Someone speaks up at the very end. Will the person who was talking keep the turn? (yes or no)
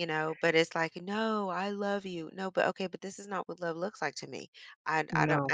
yes